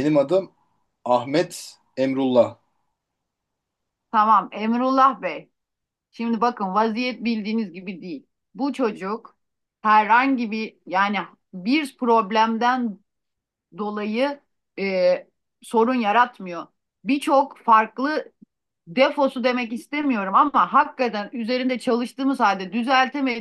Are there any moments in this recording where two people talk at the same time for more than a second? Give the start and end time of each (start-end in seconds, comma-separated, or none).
none